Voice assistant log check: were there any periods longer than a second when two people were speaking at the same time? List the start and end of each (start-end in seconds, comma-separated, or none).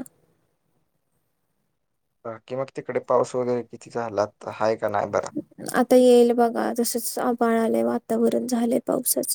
none